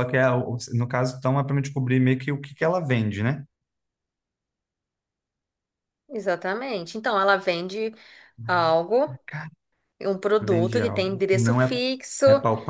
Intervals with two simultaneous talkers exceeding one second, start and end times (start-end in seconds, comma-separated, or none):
10.4-11.8